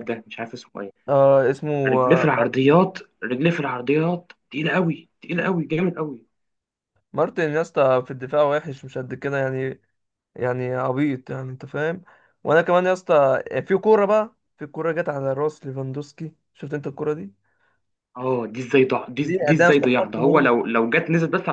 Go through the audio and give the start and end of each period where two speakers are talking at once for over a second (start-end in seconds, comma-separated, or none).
19.2-20.5